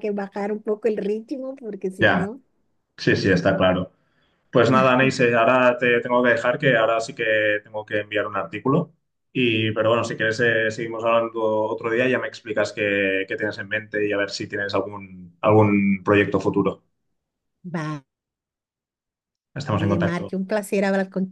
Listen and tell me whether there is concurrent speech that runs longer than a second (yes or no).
no